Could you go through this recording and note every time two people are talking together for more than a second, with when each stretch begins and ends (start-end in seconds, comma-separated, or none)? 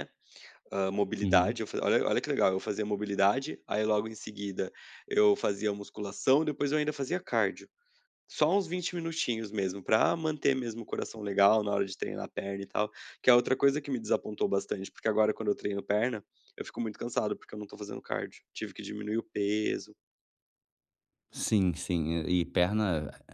none